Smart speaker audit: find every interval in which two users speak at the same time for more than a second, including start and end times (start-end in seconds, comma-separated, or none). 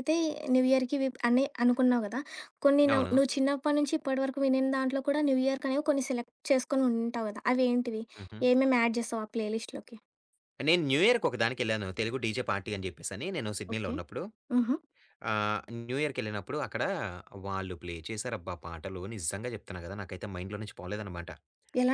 none